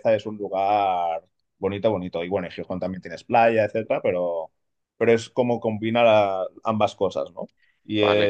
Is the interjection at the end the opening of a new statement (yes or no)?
yes